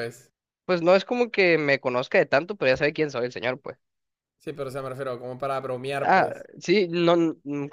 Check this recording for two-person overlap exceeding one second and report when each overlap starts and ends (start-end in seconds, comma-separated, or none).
none